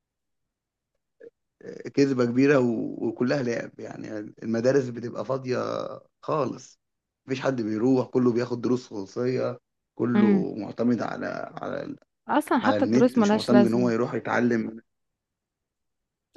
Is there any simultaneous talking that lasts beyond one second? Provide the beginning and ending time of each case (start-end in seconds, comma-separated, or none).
12.6-13.9